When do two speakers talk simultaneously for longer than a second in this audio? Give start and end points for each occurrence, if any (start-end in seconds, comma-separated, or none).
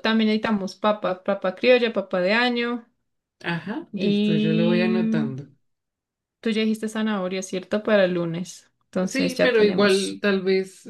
3.9-5.3, 9.0-10.2